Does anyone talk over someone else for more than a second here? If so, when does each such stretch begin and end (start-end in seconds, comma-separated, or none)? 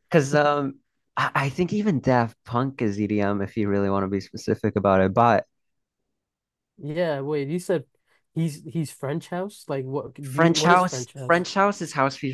10.2-11.4